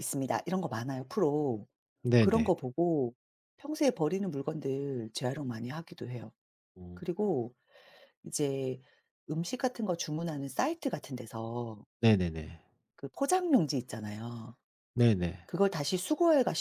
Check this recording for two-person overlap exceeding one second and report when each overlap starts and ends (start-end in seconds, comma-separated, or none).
none